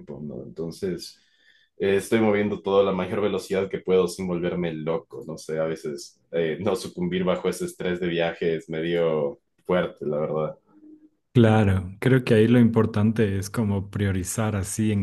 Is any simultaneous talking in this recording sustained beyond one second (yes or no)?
no